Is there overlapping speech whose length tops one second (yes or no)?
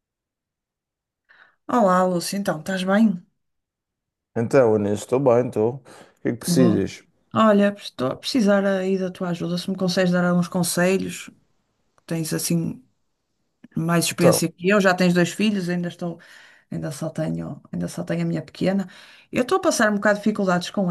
no